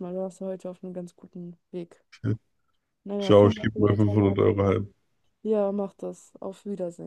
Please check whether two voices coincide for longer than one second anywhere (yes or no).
yes